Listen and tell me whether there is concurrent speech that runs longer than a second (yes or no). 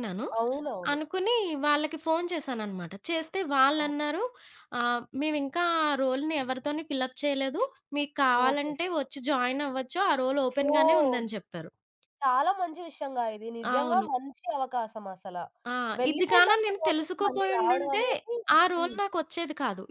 yes